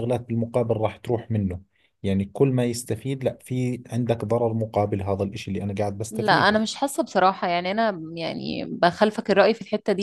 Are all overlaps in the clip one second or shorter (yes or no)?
yes